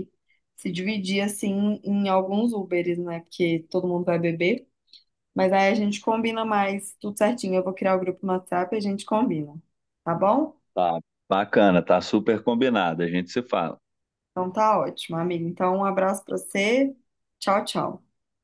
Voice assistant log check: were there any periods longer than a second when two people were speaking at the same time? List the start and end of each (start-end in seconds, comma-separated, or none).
none